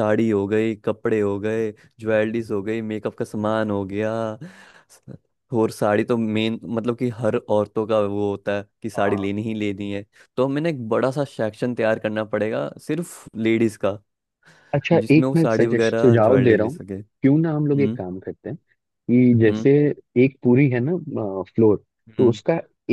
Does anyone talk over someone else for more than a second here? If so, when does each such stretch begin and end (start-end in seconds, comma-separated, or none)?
15.0-16.8